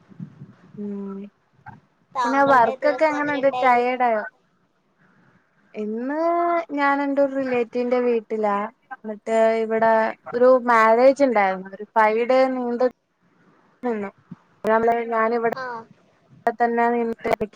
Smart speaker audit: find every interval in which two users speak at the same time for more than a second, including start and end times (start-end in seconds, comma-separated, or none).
2.2-4.0